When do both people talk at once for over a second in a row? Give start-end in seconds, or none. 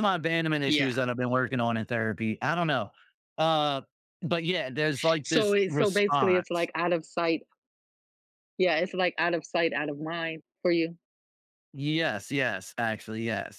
5.2-6.7